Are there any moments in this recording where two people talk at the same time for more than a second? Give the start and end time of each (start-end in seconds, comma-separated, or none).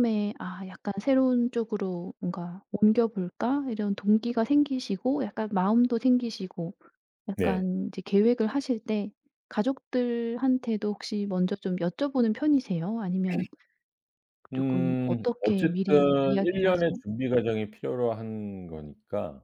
14.5-17.0